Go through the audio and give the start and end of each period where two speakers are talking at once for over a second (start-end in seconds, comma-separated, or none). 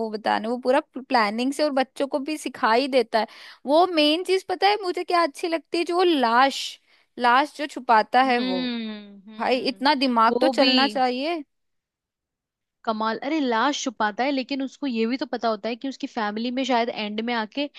9.4-10.7